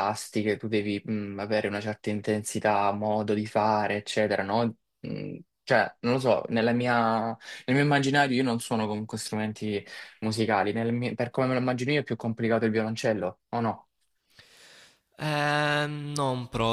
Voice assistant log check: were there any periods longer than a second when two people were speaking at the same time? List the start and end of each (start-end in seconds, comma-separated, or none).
none